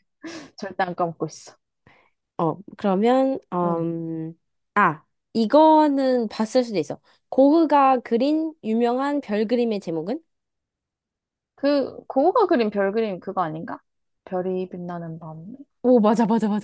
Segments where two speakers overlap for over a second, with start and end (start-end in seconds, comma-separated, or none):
none